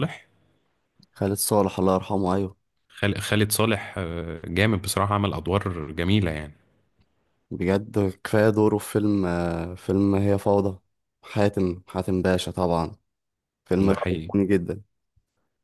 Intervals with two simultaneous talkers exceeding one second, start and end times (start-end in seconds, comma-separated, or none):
none